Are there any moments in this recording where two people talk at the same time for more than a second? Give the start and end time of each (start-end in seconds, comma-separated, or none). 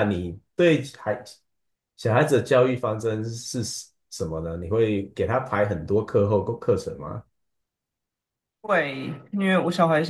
none